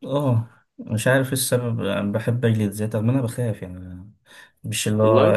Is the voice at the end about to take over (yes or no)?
no